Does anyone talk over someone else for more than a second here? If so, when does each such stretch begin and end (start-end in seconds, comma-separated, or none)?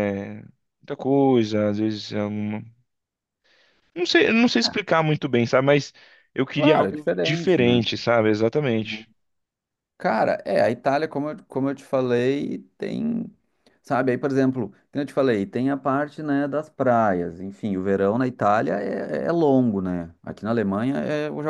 6.5-7.9